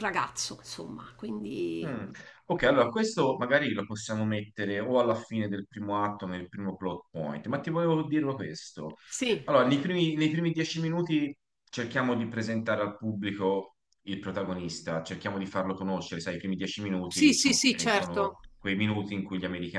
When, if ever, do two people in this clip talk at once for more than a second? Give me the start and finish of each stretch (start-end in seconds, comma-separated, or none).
17.1-18.4